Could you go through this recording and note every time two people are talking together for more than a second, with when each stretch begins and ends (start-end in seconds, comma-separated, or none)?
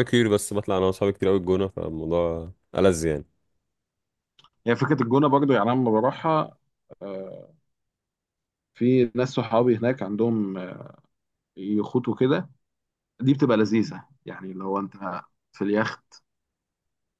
none